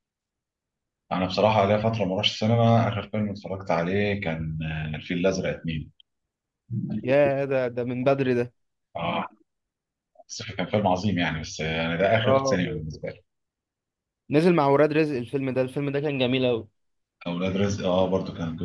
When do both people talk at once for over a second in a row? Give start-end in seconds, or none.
none